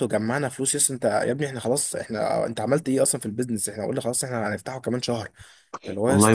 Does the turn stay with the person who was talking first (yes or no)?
no